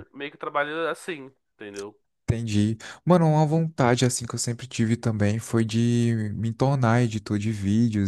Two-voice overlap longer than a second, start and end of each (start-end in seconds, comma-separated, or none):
none